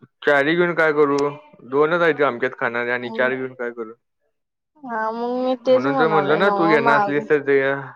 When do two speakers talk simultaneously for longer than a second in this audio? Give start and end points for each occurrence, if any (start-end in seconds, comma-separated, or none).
5.7-7.2